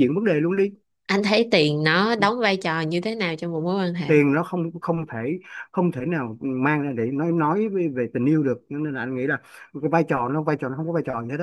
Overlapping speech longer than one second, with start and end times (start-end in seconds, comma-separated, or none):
none